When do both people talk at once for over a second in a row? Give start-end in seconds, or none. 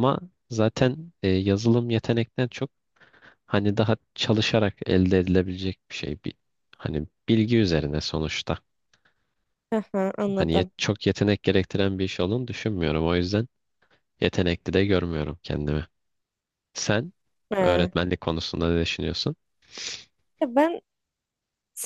none